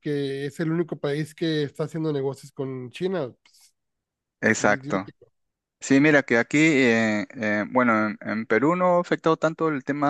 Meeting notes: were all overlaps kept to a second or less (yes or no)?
yes